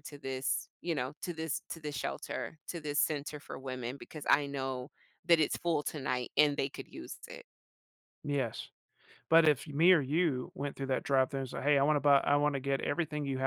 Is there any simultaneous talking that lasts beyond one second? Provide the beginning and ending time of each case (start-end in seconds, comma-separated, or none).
none